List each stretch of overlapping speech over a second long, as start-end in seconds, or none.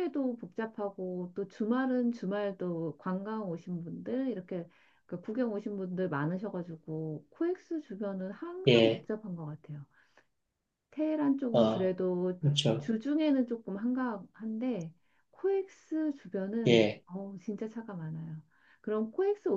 none